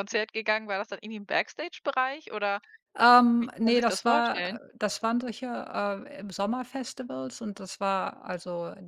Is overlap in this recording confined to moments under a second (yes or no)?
no